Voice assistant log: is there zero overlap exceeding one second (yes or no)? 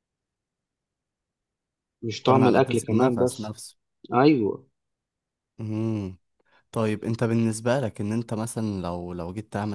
no